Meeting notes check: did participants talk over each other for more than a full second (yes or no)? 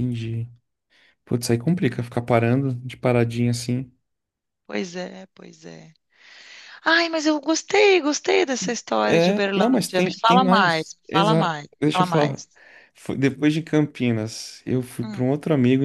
yes